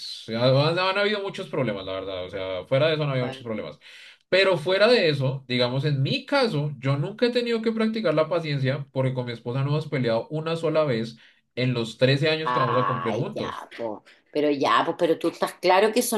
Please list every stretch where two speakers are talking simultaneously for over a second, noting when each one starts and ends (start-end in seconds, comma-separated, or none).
12.4-13.7